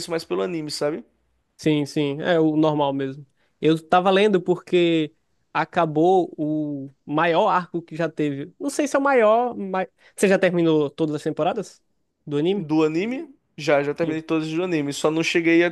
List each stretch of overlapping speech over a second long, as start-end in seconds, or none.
none